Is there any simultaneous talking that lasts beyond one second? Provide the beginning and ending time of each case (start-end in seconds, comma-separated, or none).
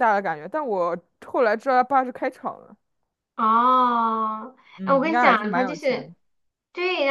4.8-6.1